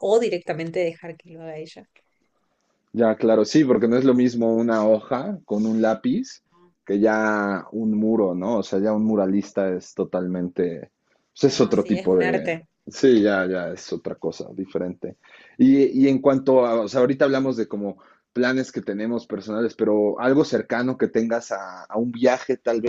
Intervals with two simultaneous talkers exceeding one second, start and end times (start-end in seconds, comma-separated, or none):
11.4-12.7